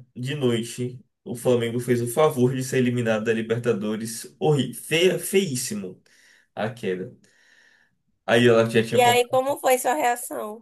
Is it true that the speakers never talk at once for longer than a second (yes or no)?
yes